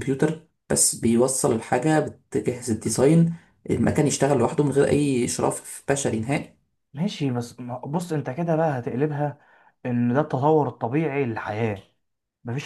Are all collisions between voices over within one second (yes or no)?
yes